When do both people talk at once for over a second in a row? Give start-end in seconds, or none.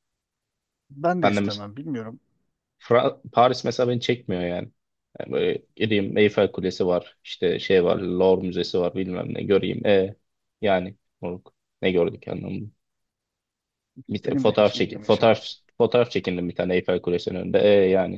14.3-15.5